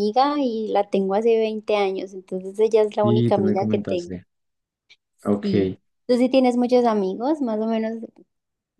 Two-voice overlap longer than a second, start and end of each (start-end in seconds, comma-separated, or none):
3.0-4.2